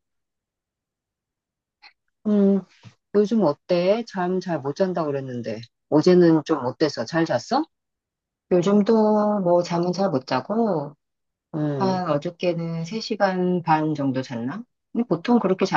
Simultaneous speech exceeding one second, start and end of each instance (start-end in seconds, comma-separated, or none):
none